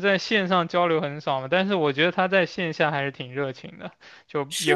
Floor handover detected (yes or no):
no